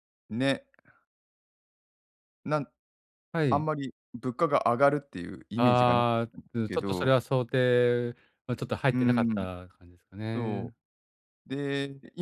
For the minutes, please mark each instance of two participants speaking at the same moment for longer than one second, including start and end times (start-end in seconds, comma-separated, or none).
5.5-7.2